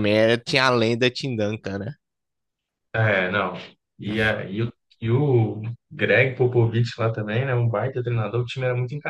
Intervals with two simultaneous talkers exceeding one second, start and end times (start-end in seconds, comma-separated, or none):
none